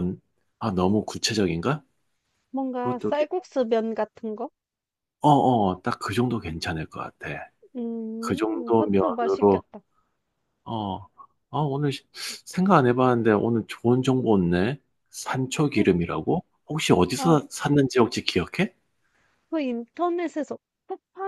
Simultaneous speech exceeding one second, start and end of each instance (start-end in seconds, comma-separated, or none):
8.2-9.6